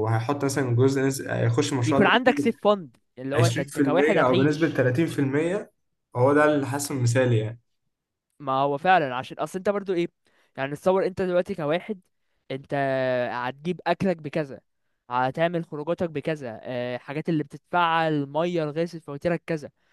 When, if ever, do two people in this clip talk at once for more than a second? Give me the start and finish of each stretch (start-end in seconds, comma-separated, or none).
3.3-4.8